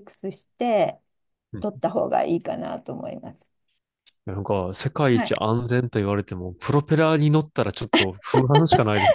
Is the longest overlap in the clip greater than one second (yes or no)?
no